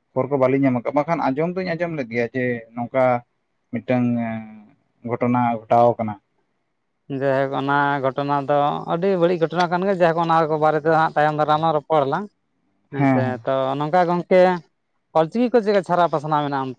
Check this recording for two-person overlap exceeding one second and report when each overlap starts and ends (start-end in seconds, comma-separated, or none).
none